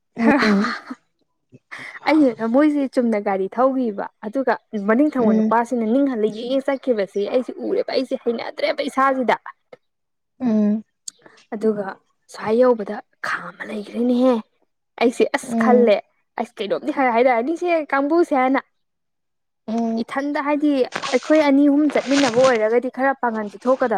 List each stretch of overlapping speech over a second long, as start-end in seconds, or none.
none